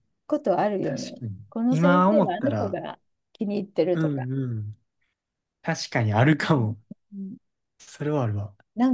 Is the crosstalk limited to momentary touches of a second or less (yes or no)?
no